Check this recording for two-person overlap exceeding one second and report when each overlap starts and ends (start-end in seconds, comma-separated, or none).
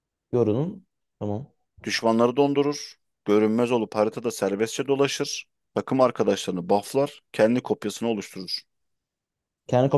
none